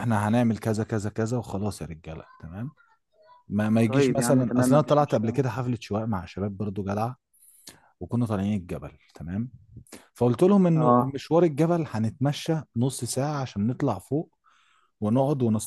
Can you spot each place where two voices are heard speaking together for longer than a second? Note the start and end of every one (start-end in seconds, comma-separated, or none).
3.8-5.4